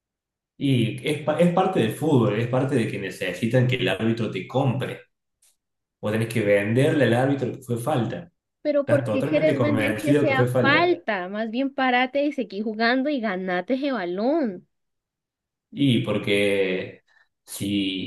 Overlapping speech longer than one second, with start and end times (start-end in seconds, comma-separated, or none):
8.8-11.0